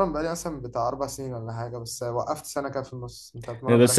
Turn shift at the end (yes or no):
yes